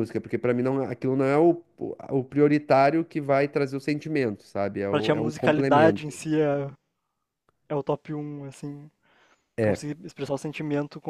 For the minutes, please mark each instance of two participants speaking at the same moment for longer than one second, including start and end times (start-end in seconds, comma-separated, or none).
4.9-6.2